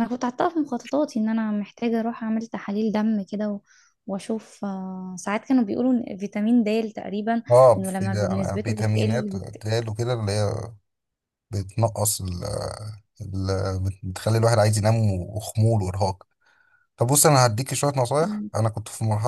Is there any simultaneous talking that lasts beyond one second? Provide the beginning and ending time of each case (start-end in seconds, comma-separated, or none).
7.5-9.6